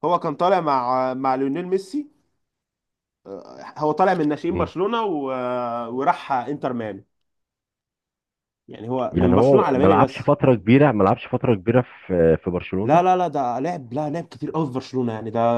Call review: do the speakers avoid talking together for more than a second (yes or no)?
no